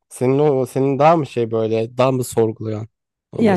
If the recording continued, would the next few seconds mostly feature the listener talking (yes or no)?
yes